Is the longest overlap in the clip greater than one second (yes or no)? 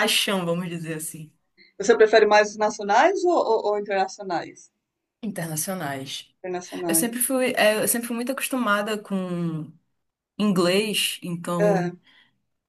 no